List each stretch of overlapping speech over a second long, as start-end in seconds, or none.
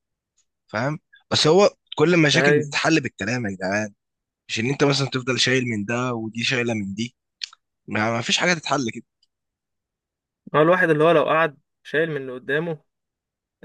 none